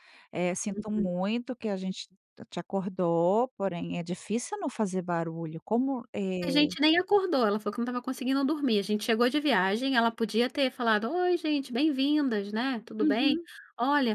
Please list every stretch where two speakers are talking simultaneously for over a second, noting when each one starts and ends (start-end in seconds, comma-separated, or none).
none